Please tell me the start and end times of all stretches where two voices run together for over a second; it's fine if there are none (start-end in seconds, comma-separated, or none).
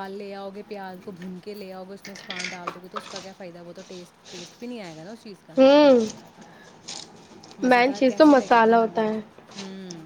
7.7-9.0